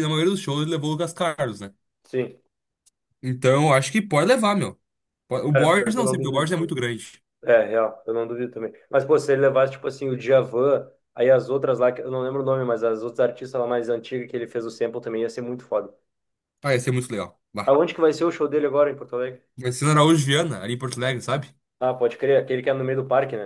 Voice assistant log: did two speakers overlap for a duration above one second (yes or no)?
yes